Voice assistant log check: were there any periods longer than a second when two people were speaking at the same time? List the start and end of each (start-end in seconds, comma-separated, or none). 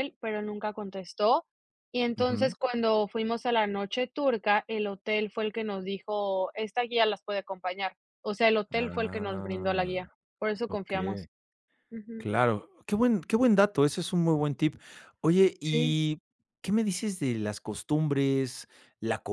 8.8-10.0